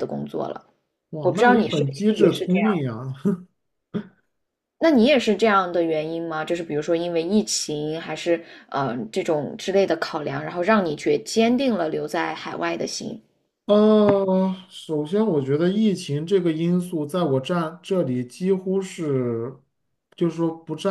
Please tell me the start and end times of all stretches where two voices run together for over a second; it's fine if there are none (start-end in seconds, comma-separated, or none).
1.2-2.7